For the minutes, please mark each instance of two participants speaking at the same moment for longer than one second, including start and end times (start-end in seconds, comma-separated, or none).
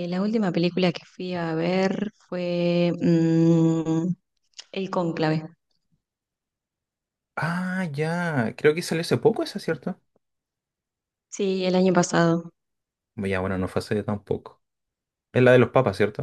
none